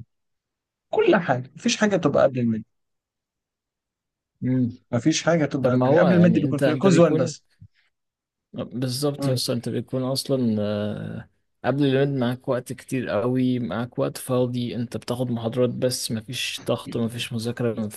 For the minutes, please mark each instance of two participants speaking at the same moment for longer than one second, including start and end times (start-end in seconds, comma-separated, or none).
5.6-7.3